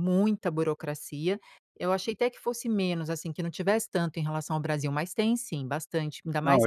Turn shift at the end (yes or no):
yes